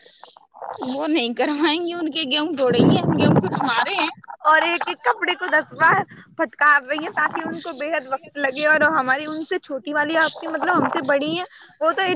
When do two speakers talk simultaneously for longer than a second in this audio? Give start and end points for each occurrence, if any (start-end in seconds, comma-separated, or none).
none